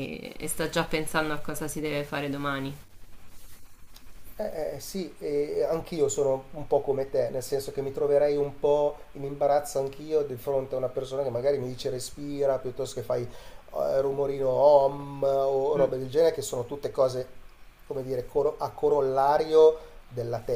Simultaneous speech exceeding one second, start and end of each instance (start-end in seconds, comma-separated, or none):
none